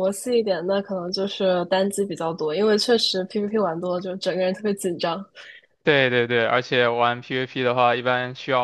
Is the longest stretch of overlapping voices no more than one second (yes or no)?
yes